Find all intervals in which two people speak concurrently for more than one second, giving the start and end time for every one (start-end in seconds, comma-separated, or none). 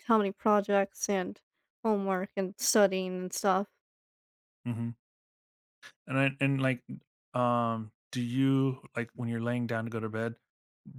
none